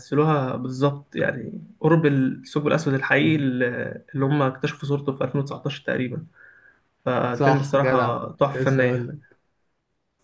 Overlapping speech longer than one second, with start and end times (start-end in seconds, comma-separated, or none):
7.3-9.1